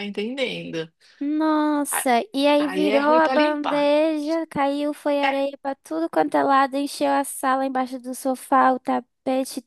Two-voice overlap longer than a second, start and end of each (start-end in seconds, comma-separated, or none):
2.6-3.9